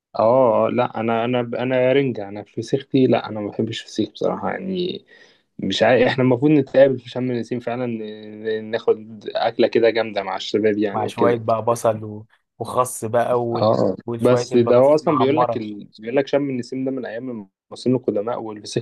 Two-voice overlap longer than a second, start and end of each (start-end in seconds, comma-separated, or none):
13.6-15.7